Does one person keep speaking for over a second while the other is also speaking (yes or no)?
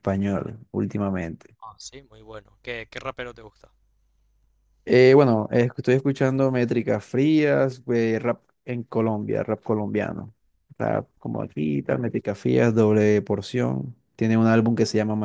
no